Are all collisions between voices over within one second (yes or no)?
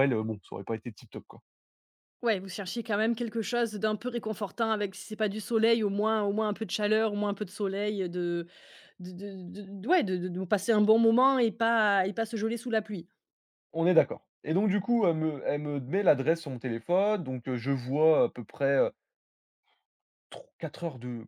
yes